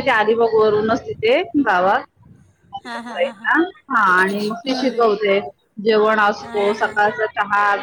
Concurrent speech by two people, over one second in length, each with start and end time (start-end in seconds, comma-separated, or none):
none